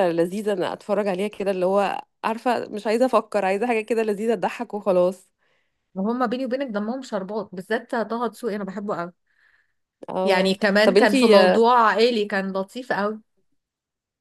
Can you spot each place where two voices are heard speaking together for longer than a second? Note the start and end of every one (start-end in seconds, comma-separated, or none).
10.2-11.7